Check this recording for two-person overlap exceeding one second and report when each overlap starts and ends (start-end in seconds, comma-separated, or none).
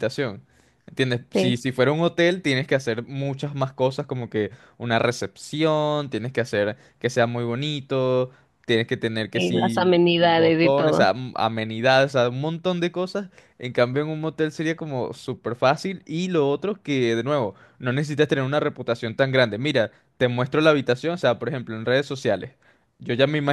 9.3-11.1